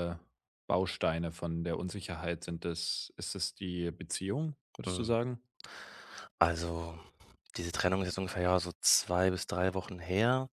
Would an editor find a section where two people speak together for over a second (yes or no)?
no